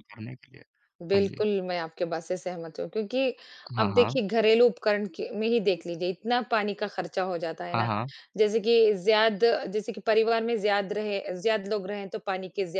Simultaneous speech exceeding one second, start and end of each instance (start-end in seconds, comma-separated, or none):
none